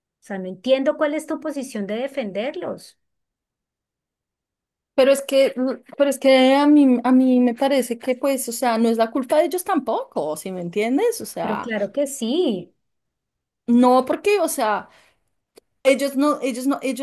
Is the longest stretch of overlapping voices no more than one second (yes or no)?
yes